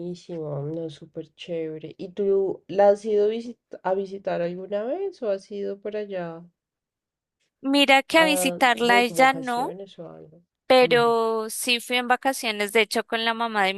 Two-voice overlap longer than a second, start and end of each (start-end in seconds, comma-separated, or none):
8.2-9.7